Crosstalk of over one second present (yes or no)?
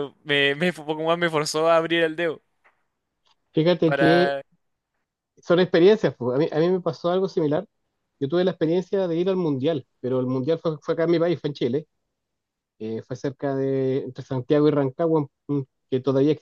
no